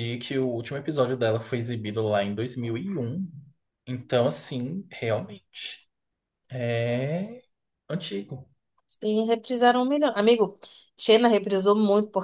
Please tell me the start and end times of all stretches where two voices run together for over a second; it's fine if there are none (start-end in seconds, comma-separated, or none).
none